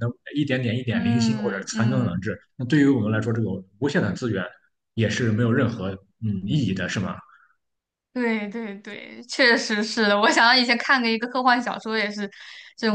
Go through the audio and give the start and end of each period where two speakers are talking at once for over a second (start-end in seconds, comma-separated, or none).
0.9-2.2